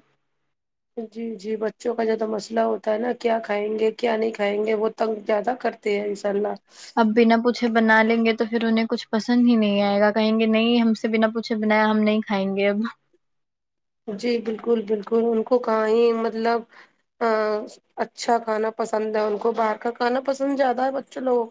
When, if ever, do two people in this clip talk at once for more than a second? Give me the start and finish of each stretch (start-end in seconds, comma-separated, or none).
none